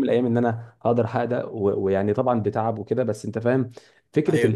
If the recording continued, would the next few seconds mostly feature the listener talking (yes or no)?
no